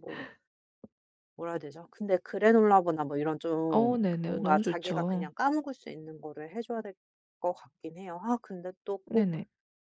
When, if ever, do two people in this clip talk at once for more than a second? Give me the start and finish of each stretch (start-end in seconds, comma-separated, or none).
3.7-5.3